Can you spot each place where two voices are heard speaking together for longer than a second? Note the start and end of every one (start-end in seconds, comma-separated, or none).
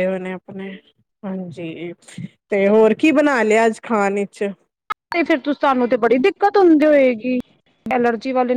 none